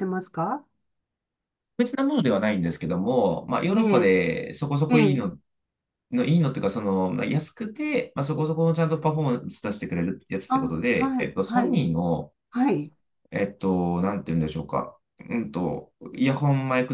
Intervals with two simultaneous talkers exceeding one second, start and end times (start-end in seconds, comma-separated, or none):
10.5-11.8